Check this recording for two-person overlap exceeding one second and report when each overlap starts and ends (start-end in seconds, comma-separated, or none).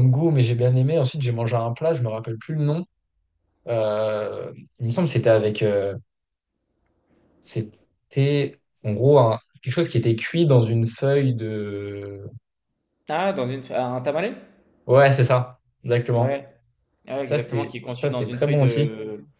17.2-18.9